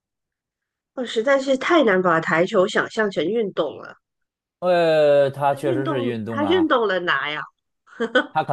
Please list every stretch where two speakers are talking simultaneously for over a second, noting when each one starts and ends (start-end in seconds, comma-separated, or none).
5.5-6.7